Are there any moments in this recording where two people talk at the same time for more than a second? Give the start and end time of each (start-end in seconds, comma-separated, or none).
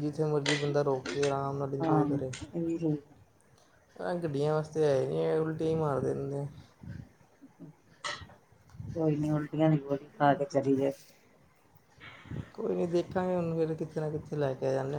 none